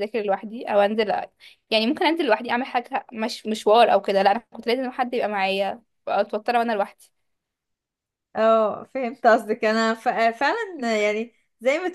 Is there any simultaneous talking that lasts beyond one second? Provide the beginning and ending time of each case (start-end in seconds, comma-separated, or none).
none